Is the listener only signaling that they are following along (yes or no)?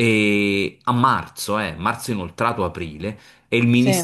yes